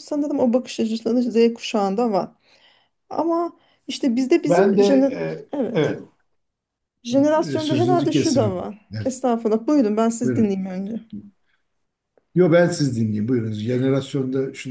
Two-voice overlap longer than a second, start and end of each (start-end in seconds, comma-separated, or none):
7.5-9.1